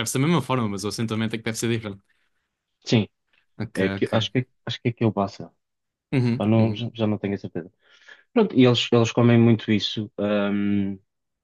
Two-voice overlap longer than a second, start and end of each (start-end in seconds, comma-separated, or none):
none